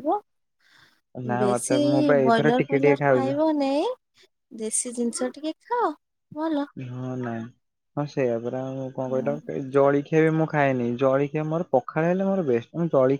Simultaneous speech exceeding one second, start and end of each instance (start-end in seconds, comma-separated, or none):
1.4-3.3